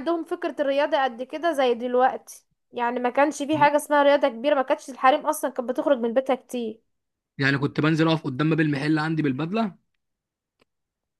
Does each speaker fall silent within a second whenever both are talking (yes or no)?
yes